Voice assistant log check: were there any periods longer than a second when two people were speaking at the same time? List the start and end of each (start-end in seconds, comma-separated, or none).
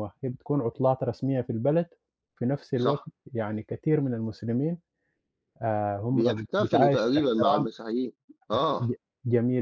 6.1-7.7